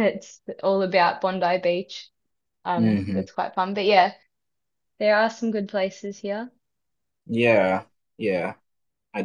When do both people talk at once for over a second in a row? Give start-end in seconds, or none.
none